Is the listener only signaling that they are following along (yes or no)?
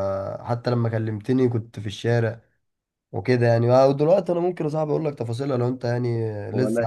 no